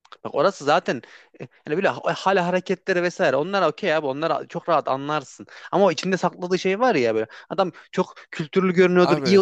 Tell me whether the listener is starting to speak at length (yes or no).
no